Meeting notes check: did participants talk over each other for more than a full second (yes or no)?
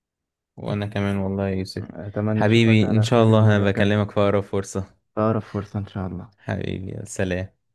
yes